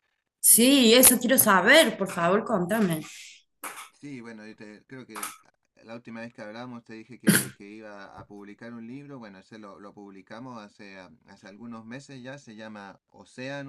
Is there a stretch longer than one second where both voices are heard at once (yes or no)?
no